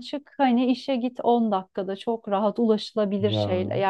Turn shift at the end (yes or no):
no